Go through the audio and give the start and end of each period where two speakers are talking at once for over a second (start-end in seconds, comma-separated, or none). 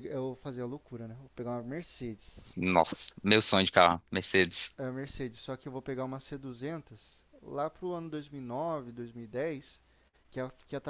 none